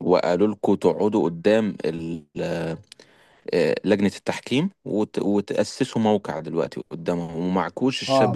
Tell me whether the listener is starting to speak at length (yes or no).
yes